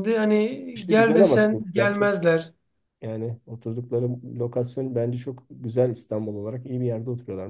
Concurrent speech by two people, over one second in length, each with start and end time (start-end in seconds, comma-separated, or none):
0.7-2.1